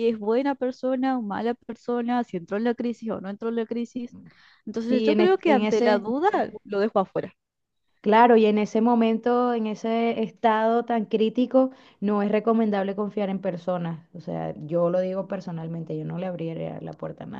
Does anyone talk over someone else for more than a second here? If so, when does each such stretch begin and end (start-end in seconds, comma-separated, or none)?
4.9-6.1